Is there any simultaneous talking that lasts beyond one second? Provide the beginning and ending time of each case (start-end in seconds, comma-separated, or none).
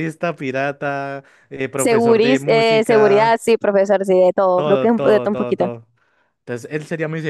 1.8-3.4, 4.5-5.7